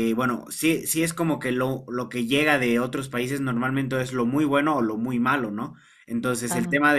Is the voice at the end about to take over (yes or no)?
no